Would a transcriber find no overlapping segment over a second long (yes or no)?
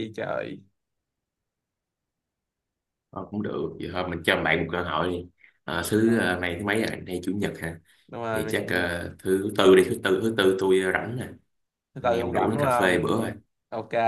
no